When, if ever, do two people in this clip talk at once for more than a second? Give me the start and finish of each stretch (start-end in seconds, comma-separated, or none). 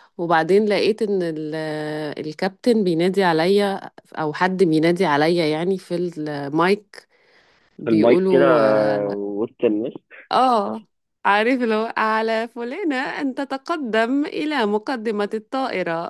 7.9-9.1